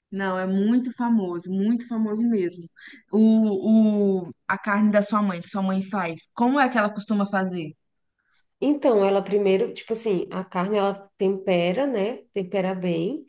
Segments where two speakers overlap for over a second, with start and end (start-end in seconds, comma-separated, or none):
none